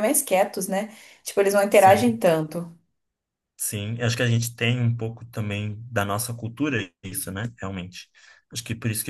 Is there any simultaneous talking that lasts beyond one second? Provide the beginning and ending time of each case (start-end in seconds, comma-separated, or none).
none